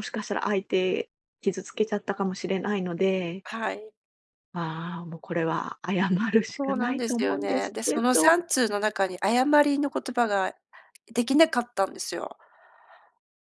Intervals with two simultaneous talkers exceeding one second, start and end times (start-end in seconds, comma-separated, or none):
6.6-8.4